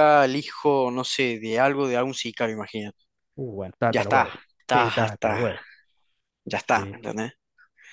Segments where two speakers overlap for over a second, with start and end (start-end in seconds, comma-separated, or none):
3.9-5.6